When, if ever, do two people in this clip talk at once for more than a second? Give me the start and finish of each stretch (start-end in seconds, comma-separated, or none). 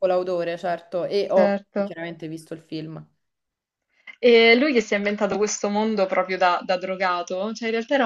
none